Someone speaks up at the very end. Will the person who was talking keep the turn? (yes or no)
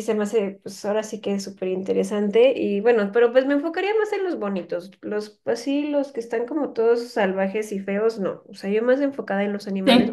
yes